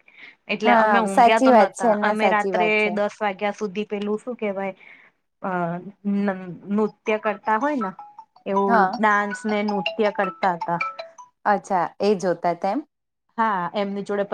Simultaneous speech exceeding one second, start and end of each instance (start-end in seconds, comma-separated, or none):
0.7-2.9